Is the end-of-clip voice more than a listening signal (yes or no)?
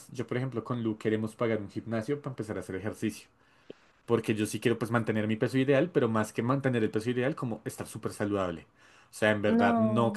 no